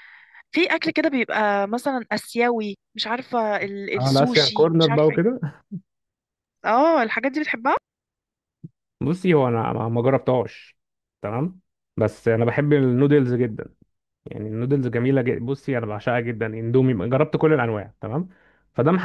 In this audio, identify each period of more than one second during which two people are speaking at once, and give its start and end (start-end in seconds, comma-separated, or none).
4.0-5.3